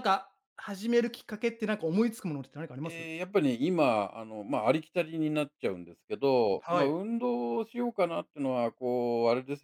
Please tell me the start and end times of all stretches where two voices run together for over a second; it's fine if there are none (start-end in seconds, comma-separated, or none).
none